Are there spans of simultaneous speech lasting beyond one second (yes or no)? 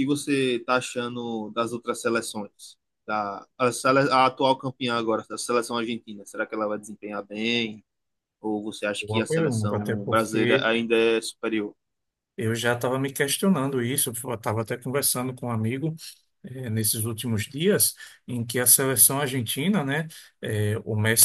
yes